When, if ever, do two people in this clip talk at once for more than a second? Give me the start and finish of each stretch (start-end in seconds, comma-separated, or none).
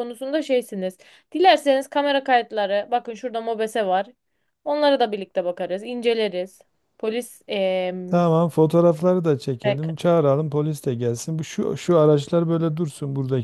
none